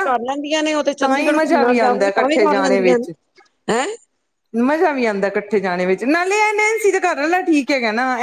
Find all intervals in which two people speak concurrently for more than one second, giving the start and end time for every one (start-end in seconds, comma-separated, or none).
1.0-3.0